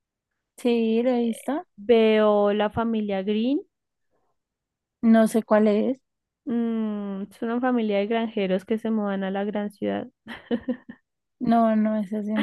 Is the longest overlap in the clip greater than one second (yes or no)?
no